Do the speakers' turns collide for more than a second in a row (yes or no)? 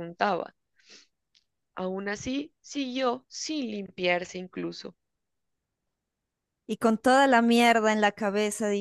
no